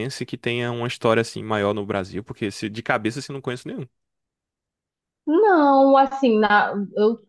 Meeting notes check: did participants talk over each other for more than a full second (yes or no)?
no